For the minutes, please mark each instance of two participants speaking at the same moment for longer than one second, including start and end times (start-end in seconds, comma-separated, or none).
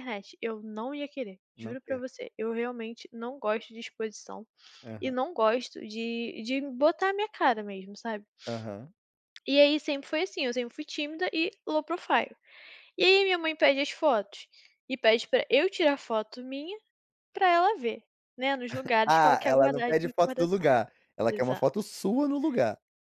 19.1-20.7